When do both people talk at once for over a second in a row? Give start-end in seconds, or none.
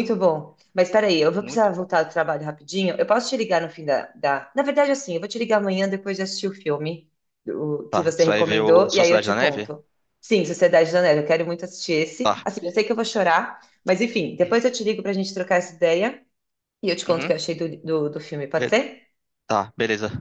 7.9-9.7